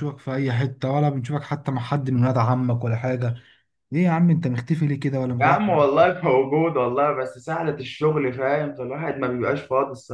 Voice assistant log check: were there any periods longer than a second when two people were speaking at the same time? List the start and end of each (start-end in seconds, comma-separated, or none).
none